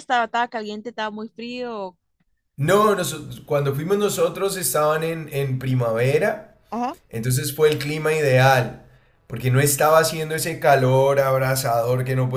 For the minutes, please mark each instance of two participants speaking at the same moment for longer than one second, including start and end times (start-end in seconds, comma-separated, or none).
none